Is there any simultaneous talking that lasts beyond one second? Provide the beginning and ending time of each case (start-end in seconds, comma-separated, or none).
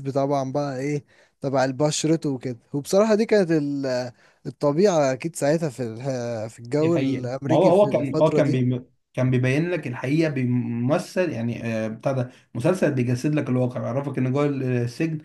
6.8-8.6